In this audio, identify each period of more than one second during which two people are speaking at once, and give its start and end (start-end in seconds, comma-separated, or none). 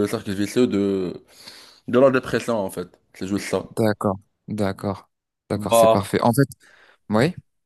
none